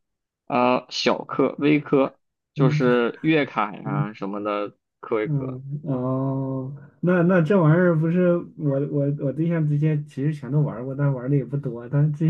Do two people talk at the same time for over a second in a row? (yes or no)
no